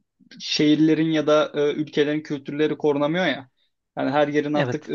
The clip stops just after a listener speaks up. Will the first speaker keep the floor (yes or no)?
yes